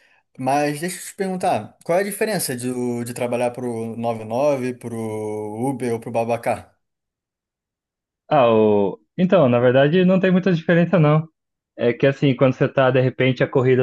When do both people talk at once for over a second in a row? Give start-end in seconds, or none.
none